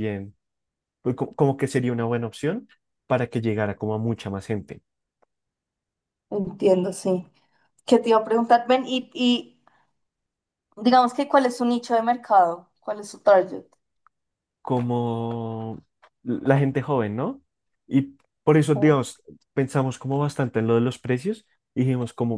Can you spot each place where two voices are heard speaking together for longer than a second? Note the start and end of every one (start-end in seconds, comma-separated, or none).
none